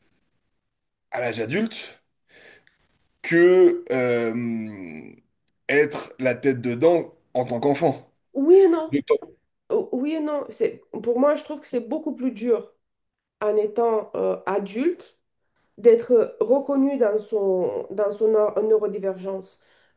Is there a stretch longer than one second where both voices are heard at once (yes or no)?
no